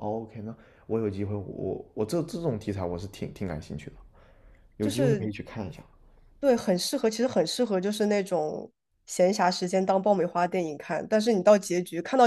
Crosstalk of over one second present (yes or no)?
no